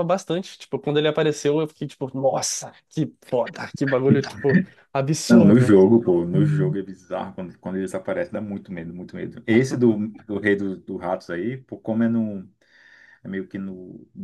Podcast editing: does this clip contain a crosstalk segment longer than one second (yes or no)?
no